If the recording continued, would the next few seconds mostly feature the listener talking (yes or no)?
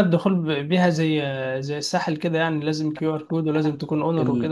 yes